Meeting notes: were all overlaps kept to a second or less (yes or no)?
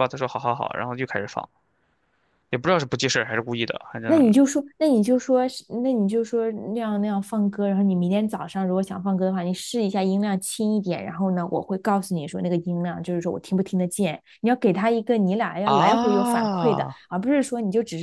no